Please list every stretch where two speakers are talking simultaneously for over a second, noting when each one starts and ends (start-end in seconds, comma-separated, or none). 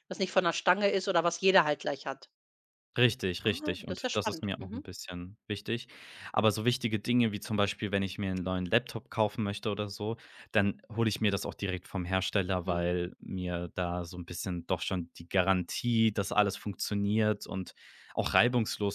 3.4-4.9